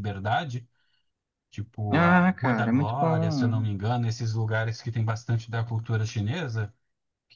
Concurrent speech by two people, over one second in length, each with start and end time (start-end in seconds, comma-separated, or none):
1.9-3.7